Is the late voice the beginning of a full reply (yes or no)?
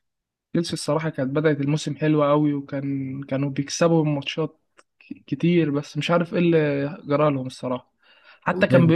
no